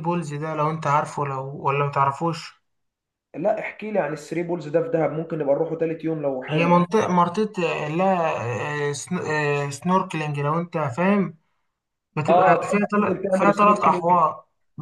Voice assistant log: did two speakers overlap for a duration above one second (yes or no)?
yes